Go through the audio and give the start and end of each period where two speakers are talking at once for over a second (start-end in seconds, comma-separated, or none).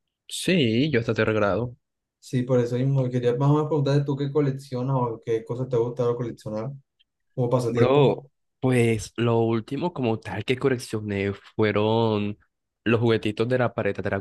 none